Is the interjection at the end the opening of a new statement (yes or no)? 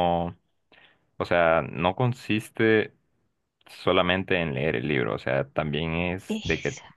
no